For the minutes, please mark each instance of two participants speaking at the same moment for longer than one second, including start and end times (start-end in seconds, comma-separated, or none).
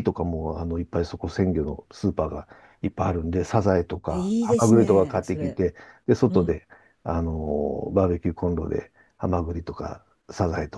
4.1-5.6